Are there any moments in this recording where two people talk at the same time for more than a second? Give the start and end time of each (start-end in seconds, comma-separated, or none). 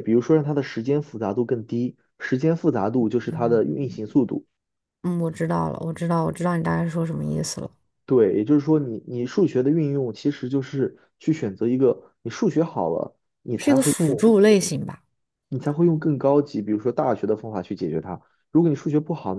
none